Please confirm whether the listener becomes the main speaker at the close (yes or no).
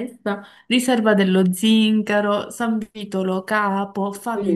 yes